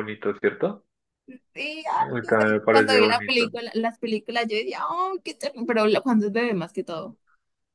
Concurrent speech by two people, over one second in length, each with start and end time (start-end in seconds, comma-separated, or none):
2.0-3.5